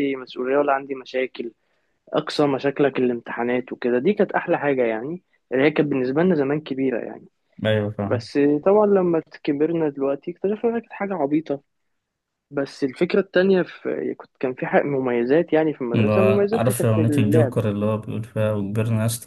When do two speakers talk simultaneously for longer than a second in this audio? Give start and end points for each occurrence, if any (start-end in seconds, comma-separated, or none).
15.9-17.6